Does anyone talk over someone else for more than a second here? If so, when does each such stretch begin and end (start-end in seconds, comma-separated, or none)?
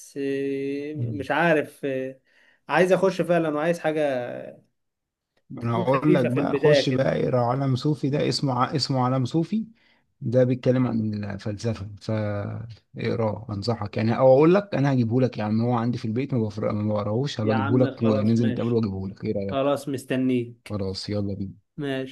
5.6-7.1, 17.4-18.8